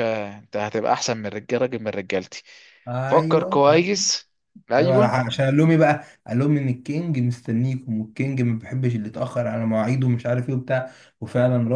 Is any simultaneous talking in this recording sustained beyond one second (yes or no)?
no